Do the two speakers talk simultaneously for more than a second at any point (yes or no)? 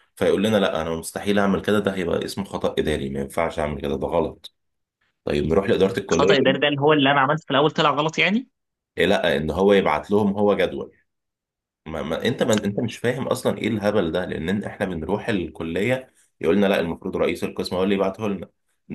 no